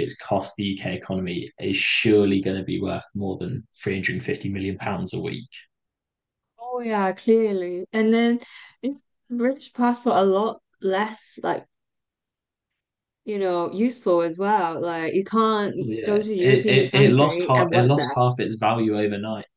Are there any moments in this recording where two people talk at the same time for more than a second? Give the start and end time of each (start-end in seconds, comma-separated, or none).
15.8-18.2